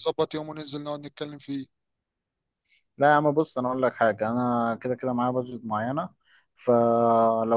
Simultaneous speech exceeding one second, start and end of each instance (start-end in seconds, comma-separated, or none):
none